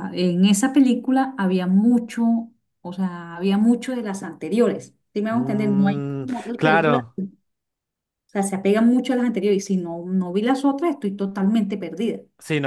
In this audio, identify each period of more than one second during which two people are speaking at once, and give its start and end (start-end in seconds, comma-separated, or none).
5.3-7.0